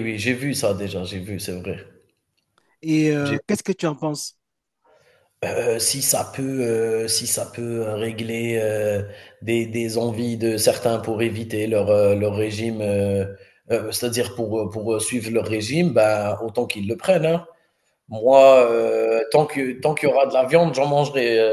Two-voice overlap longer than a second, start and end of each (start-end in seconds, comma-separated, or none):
none